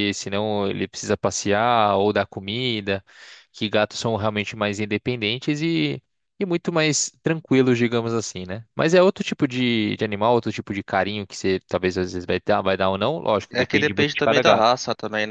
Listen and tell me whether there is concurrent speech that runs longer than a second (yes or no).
yes